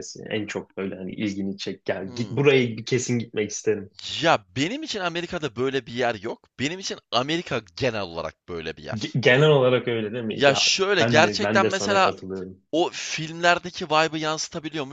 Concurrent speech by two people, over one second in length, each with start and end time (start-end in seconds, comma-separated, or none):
10.3-12.1